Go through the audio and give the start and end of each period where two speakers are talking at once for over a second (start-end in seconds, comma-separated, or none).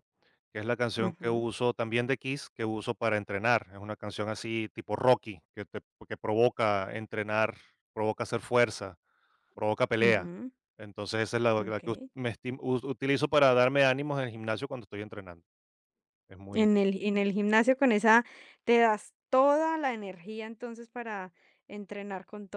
none